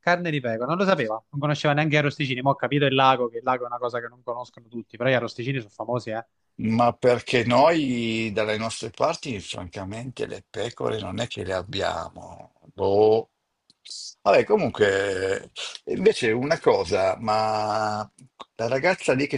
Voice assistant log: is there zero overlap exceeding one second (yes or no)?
yes